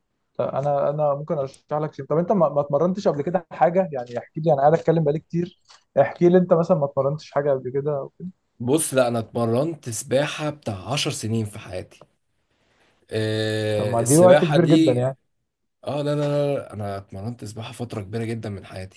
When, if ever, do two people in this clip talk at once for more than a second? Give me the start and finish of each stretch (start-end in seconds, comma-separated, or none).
13.8-15.1